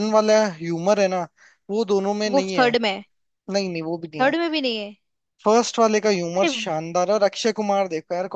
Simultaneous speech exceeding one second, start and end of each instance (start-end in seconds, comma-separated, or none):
none